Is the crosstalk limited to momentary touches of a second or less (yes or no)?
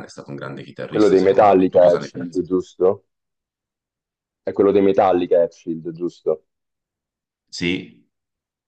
no